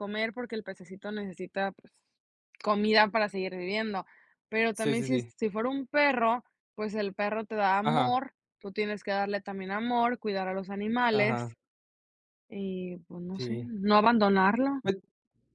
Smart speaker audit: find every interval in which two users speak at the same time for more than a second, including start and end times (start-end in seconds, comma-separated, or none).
none